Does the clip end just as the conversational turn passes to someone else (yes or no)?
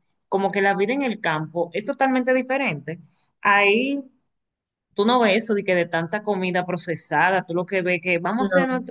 no